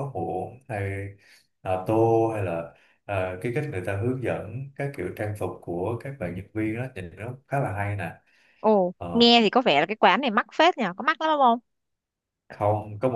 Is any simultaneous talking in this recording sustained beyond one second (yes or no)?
no